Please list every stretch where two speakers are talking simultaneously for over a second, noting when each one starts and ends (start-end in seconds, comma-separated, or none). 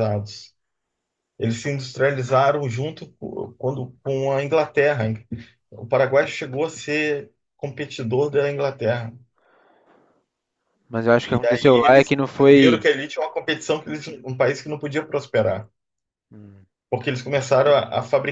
11.2-12.8